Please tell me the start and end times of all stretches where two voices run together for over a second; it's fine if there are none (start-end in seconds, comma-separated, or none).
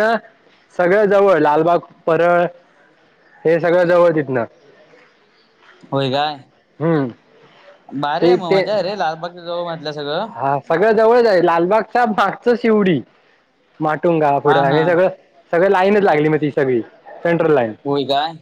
none